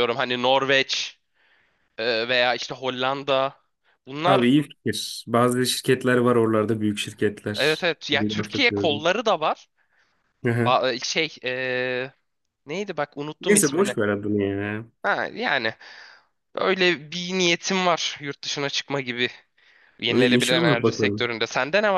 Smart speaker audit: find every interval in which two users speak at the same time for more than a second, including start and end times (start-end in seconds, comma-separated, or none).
7.6-9.1, 20.1-21.3